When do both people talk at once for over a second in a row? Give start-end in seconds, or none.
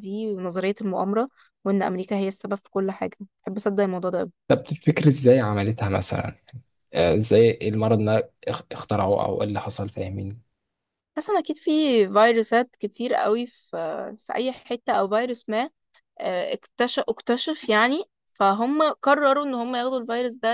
none